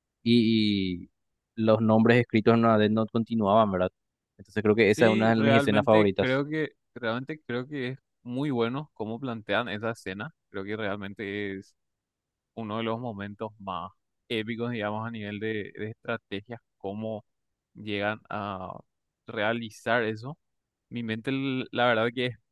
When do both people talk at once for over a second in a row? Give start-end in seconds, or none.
4.8-6.4